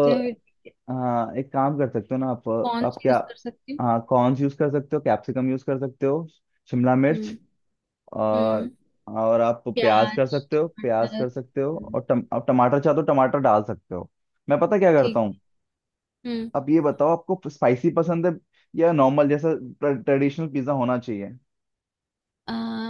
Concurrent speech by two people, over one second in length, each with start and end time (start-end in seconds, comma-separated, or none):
9.7-11.9